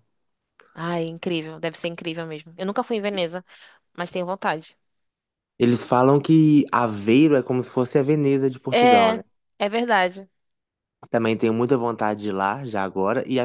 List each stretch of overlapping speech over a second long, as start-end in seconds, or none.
none